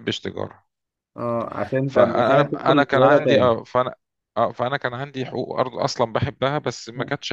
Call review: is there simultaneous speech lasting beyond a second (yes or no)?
yes